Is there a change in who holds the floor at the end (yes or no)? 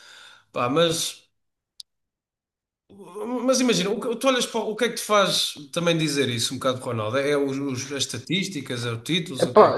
yes